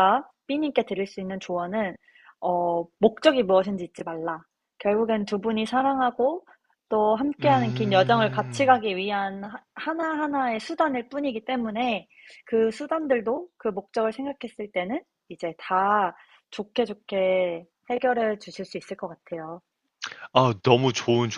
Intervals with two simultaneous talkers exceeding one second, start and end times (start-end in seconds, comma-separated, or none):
7.4-8.8